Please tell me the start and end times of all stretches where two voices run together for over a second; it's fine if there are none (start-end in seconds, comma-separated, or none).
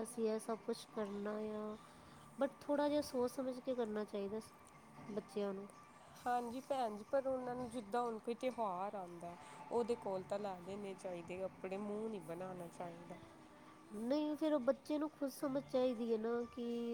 none